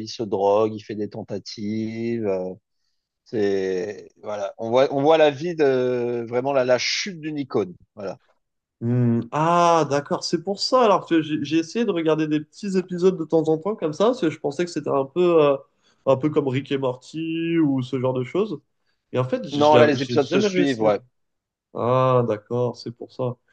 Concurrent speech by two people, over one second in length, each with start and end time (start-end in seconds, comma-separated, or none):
19.5-20.9